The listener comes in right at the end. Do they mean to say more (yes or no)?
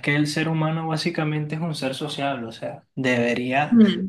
no